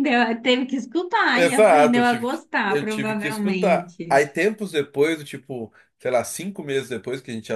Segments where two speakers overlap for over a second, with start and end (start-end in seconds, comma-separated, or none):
1.3-4.2